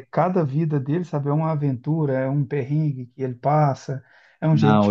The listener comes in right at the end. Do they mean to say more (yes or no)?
no